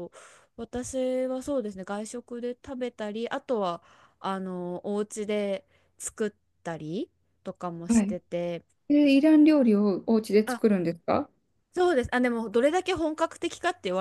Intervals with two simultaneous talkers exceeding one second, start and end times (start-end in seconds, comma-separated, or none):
none